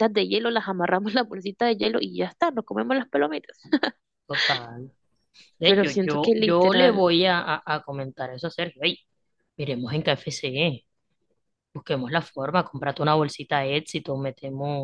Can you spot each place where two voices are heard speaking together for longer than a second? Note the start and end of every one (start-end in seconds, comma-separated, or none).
5.6-7.0